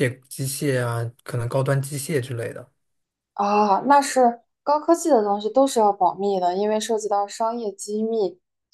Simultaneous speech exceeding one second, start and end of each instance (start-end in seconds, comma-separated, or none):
none